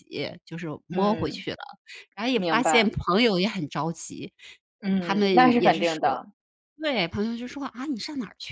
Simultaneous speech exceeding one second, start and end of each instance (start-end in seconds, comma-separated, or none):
4.8-6.2